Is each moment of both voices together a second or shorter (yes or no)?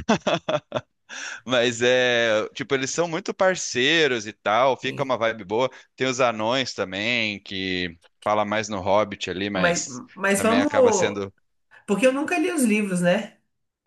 no